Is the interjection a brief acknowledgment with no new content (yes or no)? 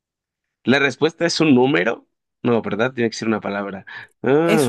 no